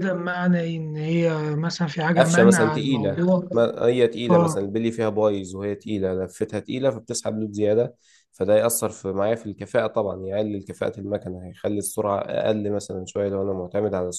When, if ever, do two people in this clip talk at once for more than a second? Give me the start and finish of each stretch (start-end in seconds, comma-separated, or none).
2.2-3.5